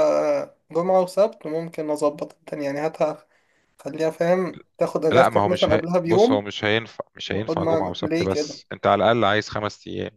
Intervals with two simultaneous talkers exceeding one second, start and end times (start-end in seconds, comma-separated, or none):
5.1-6.4, 7.3-8.6